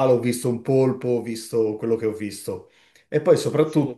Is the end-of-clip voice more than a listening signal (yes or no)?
no